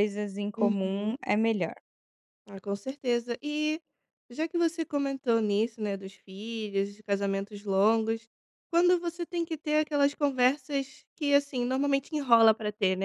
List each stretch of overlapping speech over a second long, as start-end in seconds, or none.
none